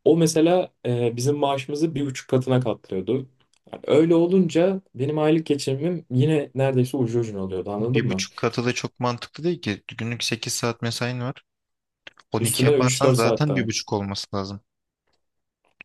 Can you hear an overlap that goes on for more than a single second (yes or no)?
yes